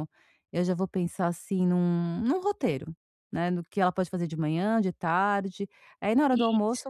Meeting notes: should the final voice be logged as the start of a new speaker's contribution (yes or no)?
no